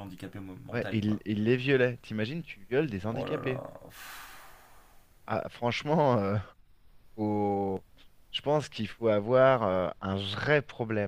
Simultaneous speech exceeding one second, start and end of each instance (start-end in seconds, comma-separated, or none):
none